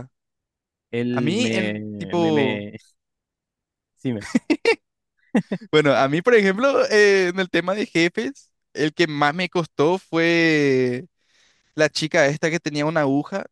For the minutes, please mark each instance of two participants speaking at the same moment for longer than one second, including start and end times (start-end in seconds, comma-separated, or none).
1.1-2.7